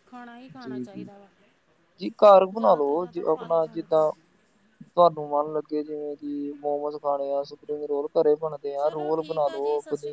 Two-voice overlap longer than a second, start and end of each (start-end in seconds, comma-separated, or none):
2.5-4.1